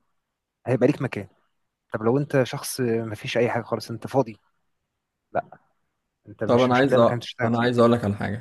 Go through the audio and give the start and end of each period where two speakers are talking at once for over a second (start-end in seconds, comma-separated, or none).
6.5-7.9